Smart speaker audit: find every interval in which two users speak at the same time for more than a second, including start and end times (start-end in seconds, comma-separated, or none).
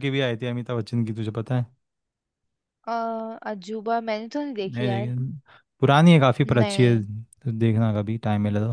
none